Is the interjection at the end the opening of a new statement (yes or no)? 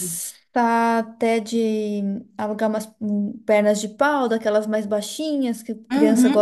yes